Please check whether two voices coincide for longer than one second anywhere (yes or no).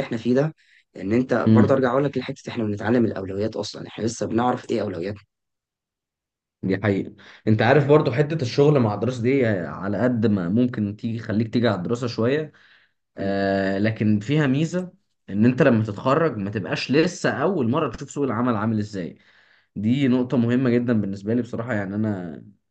no